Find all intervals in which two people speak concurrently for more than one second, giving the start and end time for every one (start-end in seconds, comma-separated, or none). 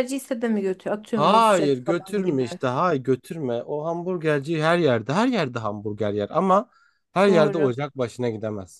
1.1-2.4